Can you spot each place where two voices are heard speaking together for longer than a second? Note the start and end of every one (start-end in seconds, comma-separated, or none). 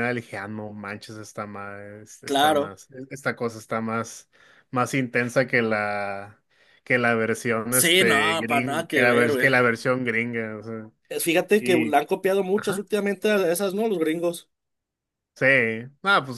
7.7-9.5